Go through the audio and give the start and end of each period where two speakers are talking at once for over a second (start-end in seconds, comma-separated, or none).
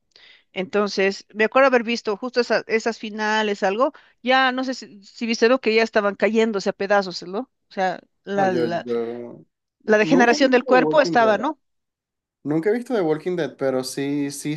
10.0-11.4